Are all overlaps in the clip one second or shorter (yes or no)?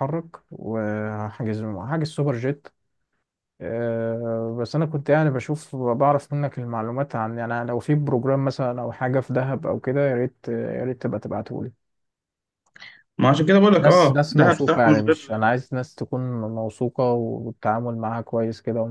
no